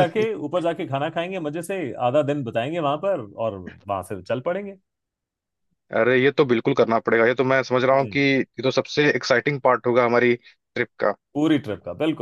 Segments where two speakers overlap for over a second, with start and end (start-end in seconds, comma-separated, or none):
none